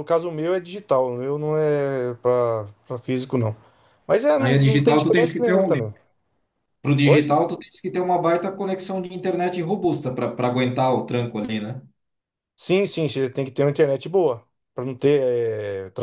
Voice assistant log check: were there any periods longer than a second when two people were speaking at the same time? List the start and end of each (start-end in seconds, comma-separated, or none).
4.4-5.8